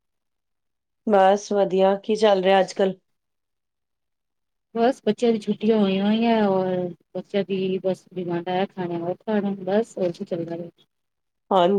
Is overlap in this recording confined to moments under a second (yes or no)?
yes